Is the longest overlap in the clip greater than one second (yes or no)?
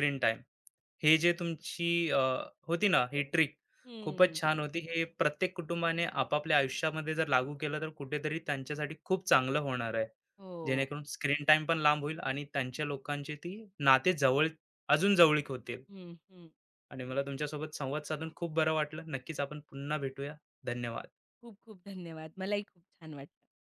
no